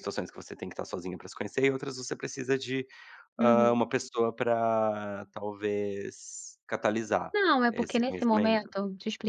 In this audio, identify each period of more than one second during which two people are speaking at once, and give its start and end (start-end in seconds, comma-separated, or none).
7.3-8.7